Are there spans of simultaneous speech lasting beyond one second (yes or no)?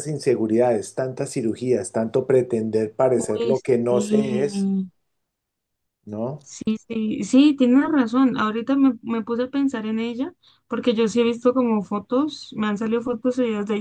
yes